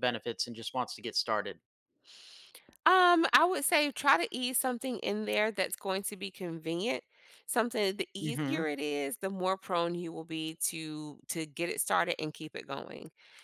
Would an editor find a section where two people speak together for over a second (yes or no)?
no